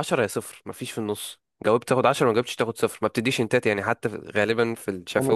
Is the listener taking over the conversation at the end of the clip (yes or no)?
yes